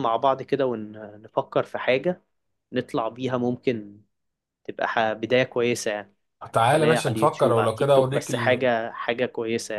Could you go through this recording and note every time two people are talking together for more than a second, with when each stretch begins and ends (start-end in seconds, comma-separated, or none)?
6.7-8.6